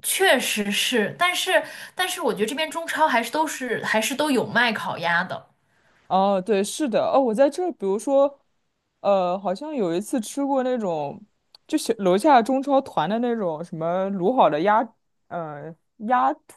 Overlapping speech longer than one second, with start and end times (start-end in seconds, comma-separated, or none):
none